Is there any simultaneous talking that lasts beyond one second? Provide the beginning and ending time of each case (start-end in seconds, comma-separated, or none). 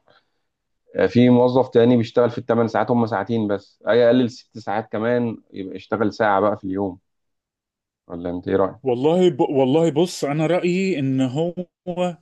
none